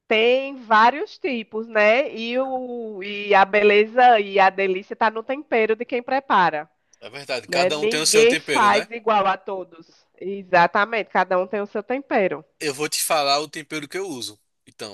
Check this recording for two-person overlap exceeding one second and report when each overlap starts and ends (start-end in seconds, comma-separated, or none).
7.5-8.9